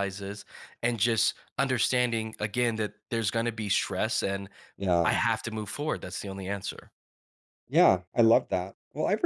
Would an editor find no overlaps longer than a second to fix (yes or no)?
yes